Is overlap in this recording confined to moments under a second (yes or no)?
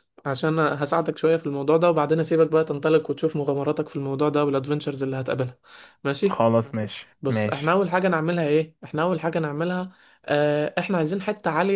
yes